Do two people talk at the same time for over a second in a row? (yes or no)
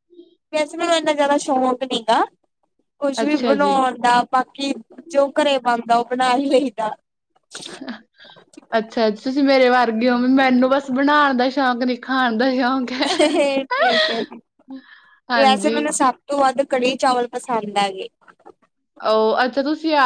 no